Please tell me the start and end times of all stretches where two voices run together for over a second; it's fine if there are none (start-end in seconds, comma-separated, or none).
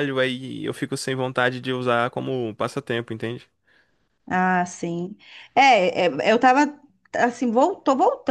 none